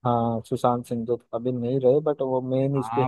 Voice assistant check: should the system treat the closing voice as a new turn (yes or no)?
yes